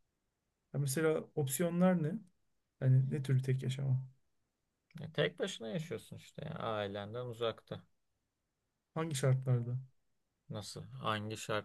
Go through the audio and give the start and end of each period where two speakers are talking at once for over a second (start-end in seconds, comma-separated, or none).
none